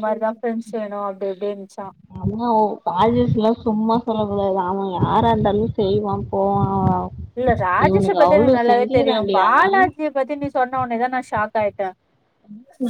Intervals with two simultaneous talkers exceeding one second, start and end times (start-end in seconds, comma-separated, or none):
7.8-9.8